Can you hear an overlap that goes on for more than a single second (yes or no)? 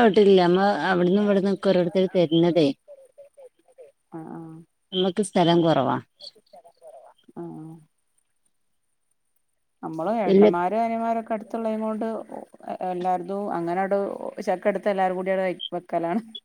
yes